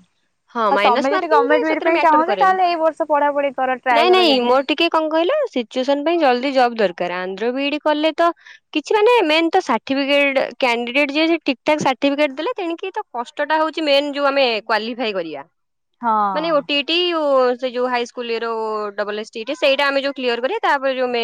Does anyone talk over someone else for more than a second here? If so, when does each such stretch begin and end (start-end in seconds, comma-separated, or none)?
0.7-2.5